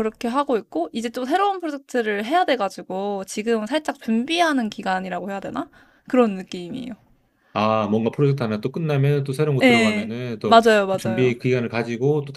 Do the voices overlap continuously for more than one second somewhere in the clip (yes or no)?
yes